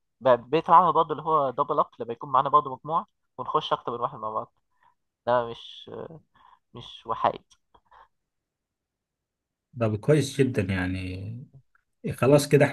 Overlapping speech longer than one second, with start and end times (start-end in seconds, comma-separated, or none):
none